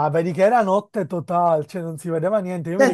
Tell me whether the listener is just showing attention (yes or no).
no